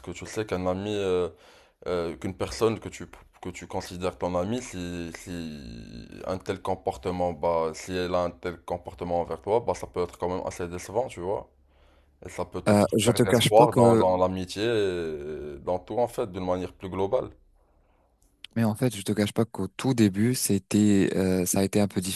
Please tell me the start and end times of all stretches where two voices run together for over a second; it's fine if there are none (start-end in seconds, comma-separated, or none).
12.7-14.0